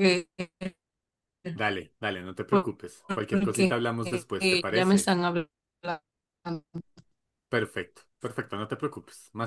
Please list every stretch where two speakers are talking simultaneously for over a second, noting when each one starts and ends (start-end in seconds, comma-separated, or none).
3.3-5.1